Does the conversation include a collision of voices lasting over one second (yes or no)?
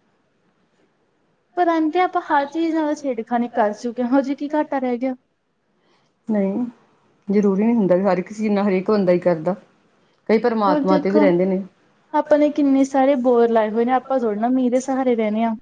no